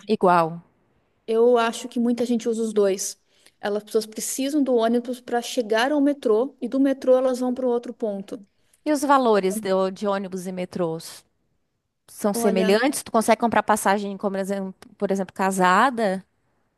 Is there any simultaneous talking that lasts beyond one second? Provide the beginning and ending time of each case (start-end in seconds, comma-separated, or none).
none